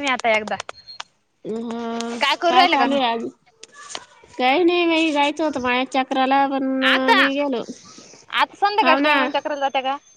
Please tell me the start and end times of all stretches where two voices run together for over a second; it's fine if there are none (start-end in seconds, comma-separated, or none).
none